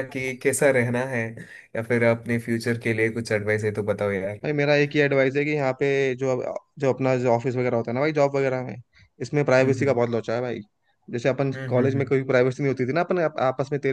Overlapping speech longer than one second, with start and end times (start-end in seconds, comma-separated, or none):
none